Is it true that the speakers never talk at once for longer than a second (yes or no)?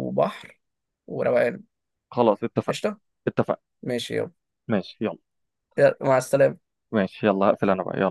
yes